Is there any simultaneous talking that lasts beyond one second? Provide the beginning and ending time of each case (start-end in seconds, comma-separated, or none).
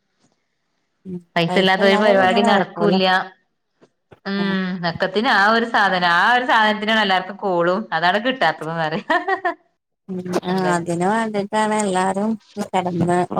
1.4-2.9